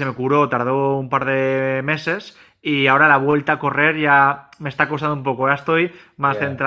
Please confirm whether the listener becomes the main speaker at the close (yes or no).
no